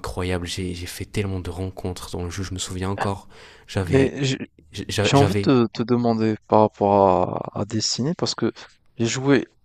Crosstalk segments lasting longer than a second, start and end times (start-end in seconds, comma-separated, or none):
none